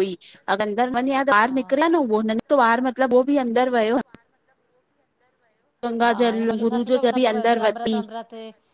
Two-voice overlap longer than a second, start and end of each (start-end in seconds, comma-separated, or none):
6.0-7.9